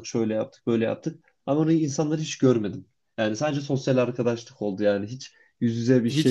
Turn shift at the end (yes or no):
yes